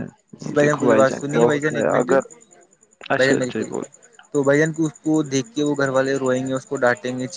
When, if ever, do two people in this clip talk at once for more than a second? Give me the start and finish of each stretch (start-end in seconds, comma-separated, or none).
0.6-2.1